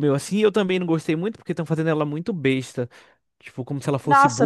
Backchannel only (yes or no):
no